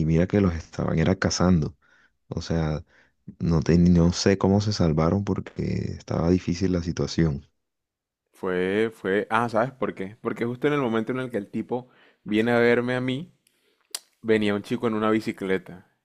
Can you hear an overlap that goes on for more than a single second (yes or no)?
no